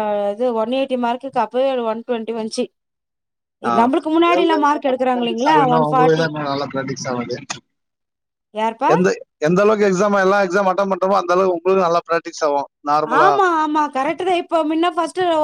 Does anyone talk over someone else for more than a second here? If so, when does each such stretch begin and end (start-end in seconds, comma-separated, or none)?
4.4-6.2